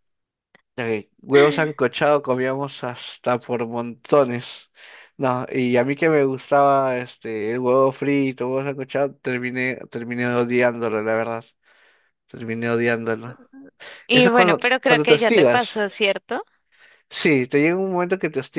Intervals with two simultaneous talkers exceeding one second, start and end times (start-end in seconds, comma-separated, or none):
14.1-15.9